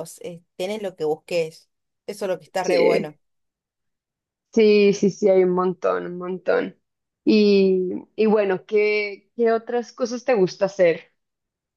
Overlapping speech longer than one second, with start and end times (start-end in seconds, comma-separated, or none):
none